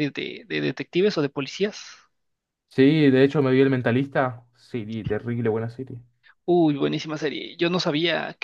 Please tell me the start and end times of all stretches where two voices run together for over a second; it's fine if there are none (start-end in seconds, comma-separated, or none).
none